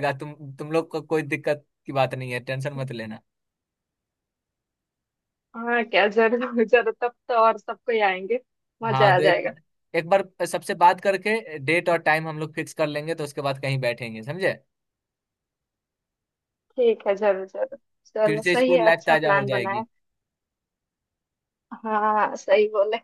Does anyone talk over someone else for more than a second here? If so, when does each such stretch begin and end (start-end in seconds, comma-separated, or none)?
18.2-19.8